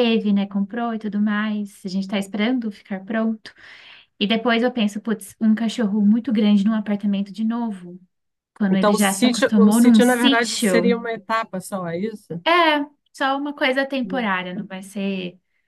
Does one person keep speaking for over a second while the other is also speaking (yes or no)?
yes